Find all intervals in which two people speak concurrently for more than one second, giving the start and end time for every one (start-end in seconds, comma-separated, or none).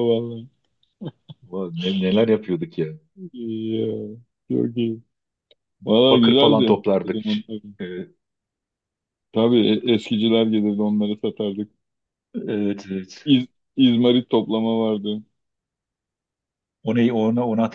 6.1-7.4